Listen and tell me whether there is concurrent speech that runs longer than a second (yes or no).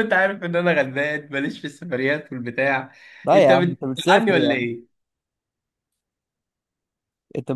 yes